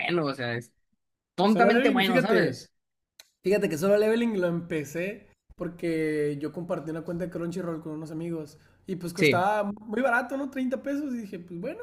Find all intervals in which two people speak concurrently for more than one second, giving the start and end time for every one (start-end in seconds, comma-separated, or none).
1.4-2.7